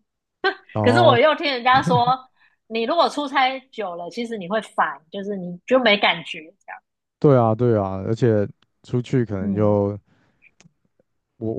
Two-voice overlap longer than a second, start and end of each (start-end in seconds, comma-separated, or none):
none